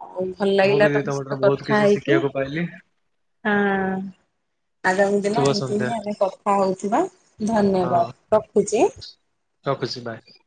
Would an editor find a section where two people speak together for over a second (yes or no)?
yes